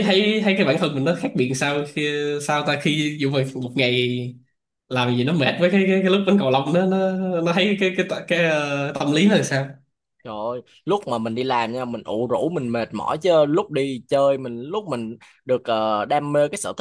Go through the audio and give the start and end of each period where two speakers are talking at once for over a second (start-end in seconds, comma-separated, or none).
none